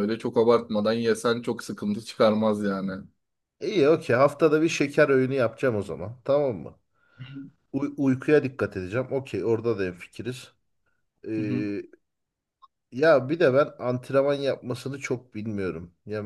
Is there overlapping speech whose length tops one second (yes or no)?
no